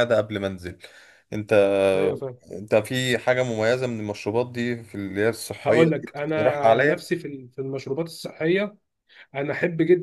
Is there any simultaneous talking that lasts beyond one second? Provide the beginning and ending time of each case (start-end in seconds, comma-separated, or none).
5.7-7.1